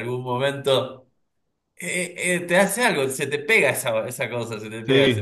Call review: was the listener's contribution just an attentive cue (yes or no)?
no